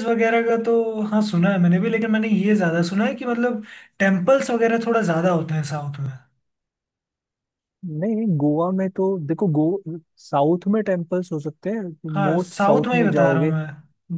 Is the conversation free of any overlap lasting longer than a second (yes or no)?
no